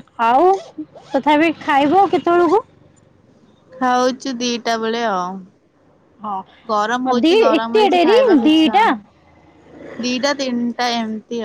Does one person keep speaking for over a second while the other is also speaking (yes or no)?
yes